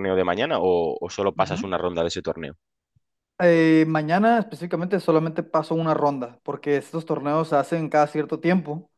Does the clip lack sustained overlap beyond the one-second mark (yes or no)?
yes